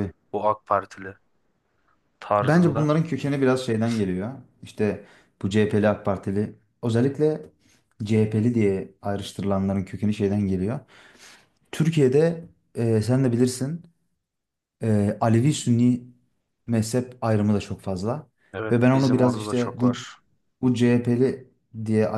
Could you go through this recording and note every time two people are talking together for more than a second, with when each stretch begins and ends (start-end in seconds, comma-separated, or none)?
18.7-20.1